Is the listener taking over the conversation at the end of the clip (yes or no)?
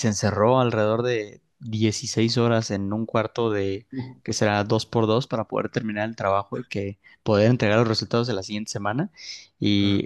no